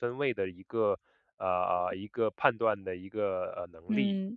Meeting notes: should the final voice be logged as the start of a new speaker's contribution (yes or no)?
yes